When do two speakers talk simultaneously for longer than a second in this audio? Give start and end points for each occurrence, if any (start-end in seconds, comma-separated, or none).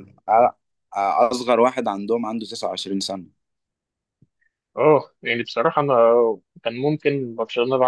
none